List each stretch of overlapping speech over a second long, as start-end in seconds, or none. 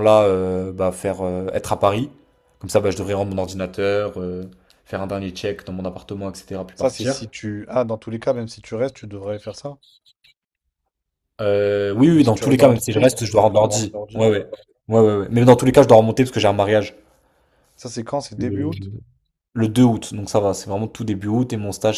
12.2-14.2